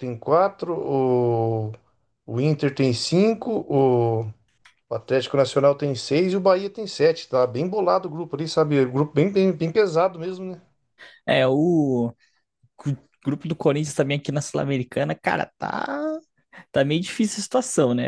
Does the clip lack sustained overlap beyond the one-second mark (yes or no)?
yes